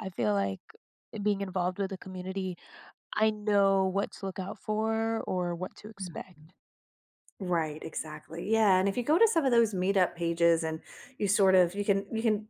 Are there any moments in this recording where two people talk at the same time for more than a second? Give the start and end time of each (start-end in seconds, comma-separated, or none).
none